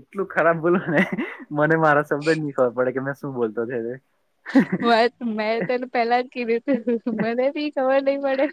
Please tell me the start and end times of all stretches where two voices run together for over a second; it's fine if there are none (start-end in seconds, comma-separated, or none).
none